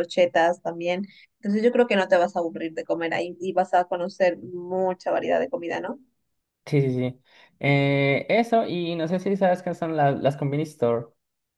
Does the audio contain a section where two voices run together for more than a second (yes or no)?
no